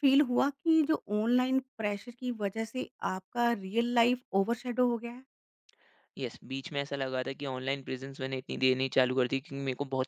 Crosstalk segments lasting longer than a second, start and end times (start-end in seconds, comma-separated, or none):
none